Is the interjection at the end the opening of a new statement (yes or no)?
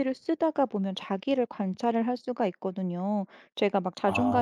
no